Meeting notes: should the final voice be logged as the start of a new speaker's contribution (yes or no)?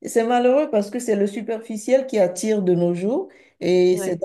no